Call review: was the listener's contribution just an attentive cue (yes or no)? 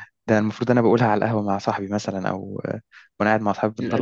no